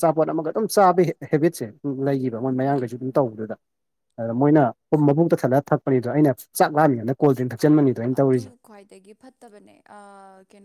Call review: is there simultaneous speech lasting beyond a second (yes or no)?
yes